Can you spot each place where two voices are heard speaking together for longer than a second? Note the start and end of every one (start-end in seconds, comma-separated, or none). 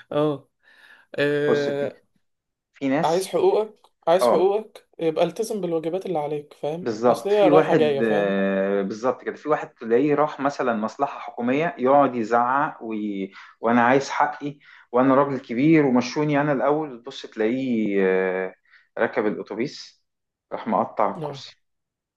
6.8-8.3